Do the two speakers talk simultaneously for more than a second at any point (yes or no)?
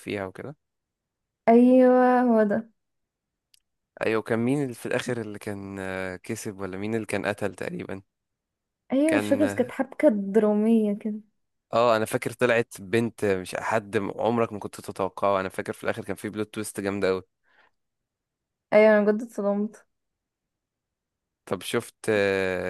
no